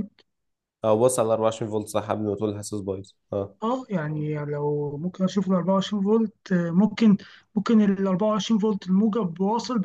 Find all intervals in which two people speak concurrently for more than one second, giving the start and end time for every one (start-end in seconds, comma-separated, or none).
none